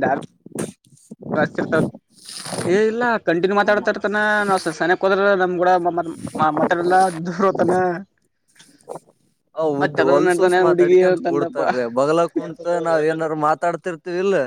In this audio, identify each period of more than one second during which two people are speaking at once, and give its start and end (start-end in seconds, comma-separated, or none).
9.8-11.6